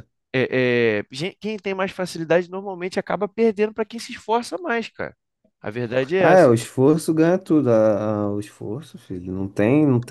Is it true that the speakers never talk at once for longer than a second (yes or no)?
yes